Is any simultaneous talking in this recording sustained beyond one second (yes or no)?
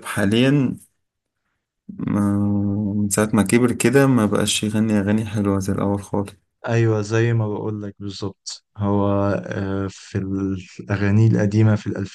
no